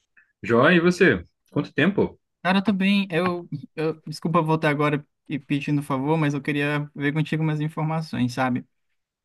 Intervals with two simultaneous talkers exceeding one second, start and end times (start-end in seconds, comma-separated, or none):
none